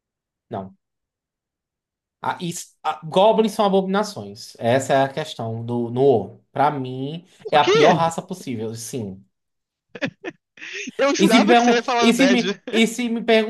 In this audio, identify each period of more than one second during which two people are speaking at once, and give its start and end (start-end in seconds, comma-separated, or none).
11.2-12.6